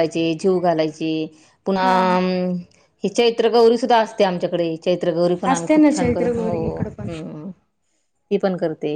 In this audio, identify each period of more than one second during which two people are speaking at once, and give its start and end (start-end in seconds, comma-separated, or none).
5.5-7.1